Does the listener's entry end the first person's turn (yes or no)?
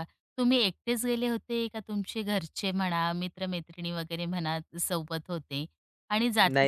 no